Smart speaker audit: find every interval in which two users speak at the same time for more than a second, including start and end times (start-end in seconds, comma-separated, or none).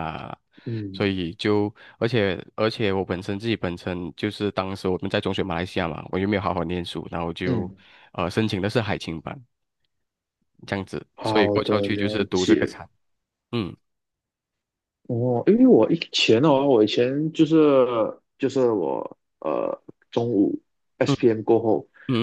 11.1-12.7